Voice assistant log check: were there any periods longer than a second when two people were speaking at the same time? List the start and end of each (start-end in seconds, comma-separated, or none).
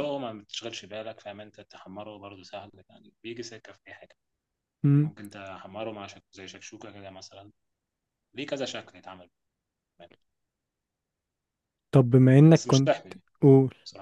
none